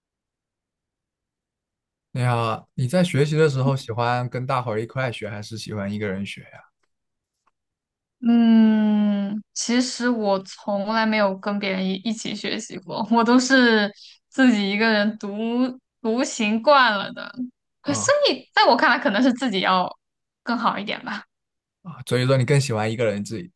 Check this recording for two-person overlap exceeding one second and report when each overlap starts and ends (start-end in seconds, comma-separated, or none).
none